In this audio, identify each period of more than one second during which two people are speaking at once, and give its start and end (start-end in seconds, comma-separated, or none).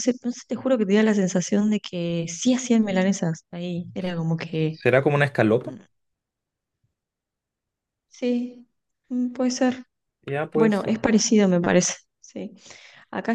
none